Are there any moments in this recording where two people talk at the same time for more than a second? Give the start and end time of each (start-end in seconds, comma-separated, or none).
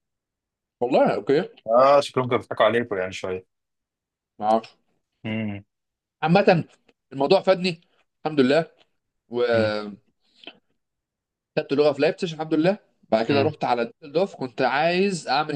none